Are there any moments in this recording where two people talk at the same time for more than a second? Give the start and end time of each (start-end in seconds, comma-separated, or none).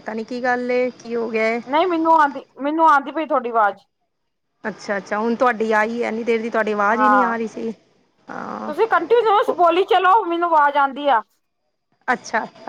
none